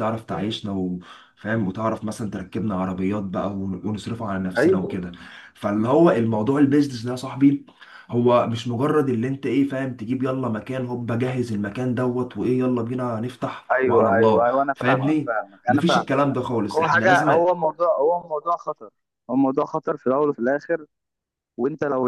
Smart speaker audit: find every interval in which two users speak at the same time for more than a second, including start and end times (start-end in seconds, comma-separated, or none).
13.7-17.3